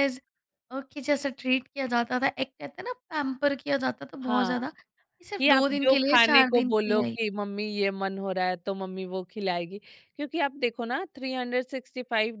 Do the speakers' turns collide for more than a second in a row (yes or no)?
yes